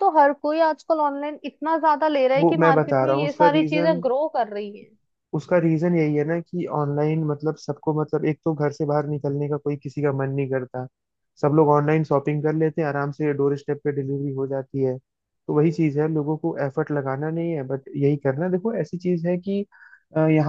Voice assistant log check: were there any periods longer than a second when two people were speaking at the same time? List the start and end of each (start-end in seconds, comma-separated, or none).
2.4-4.0